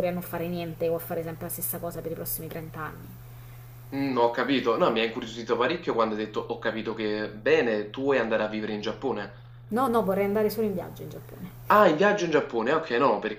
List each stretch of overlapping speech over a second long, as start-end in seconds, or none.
none